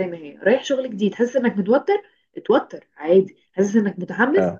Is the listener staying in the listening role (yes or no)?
yes